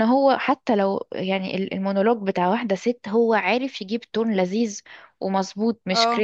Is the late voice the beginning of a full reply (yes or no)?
no